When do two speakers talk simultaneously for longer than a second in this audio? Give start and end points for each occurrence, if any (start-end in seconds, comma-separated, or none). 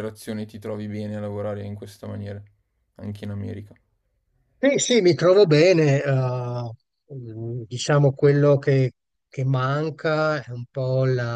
none